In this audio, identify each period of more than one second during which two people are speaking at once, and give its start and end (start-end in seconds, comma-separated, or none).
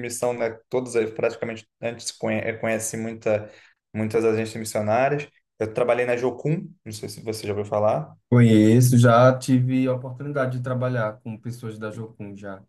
none